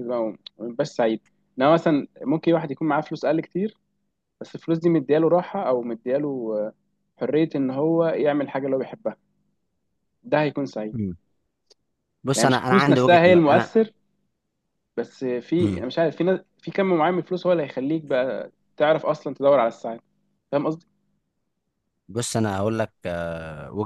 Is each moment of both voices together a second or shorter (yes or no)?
no